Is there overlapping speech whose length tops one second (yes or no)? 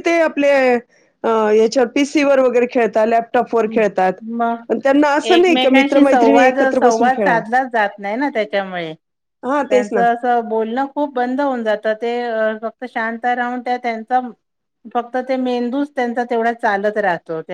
yes